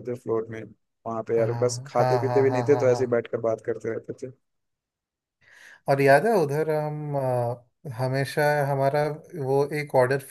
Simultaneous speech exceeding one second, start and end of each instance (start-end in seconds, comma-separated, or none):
1.4-3.3